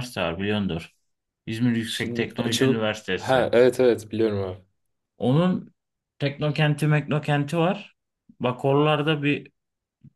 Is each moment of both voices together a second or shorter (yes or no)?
no